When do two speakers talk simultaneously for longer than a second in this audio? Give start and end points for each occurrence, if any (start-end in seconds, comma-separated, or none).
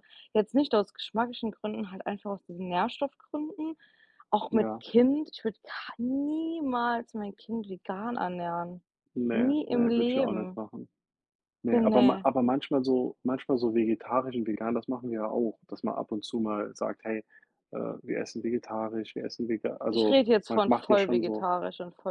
9.3-10.6, 19.9-21.5